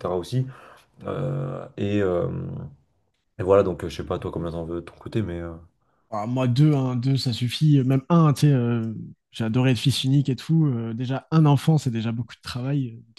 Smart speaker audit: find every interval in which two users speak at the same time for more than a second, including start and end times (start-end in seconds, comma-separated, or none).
none